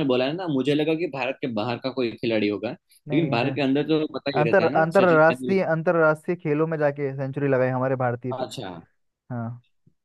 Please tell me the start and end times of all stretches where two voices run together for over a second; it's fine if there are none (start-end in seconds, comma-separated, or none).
4.4-5.6